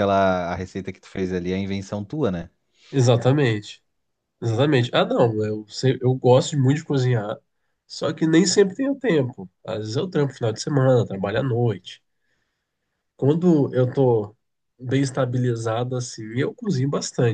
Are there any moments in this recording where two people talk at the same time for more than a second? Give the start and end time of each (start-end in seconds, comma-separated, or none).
none